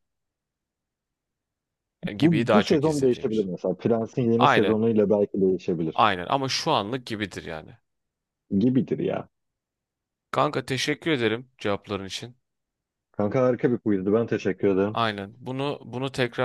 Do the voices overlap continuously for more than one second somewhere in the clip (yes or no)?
yes